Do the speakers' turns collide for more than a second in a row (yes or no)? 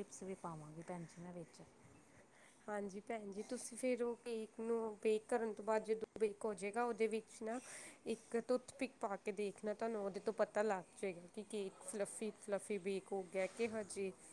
no